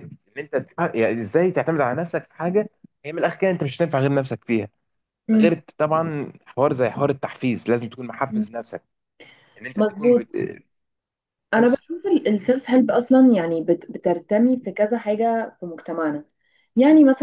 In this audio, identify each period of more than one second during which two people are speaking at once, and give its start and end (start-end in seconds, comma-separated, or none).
none